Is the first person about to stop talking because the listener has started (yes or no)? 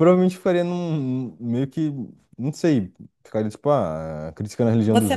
yes